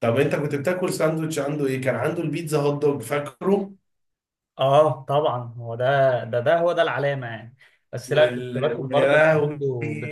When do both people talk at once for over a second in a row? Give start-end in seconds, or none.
8.1-9.6